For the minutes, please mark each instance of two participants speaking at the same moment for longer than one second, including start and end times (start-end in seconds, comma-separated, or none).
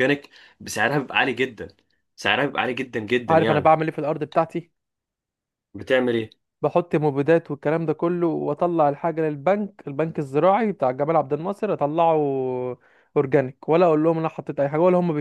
none